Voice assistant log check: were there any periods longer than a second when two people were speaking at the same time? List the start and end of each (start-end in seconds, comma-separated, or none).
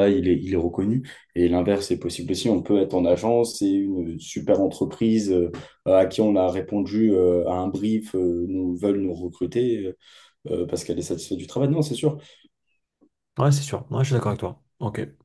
none